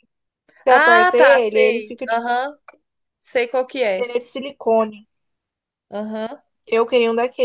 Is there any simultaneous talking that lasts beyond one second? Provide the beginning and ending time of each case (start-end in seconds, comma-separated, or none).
0.7-2.3